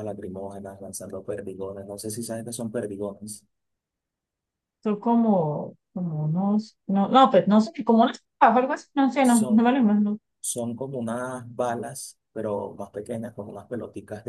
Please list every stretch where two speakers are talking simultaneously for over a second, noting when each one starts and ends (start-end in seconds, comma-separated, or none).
none